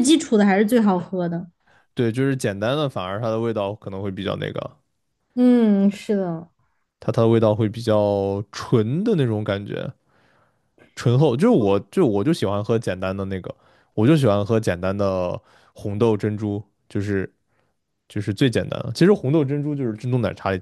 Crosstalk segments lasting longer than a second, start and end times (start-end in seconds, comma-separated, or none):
none